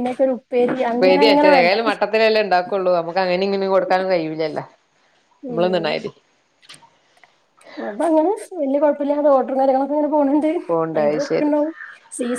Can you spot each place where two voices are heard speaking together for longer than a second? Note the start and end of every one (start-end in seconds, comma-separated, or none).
none